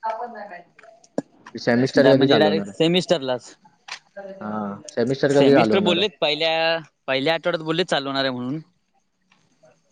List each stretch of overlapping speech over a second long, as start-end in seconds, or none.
1.7-3.4